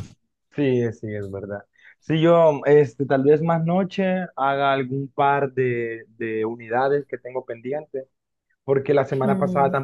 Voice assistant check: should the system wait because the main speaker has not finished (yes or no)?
yes